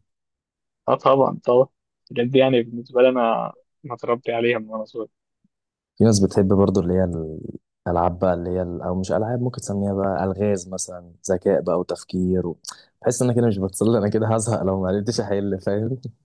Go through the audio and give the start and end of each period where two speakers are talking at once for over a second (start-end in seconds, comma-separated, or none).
none